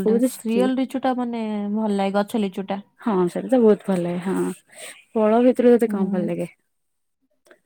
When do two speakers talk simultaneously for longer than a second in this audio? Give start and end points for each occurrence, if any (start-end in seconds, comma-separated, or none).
none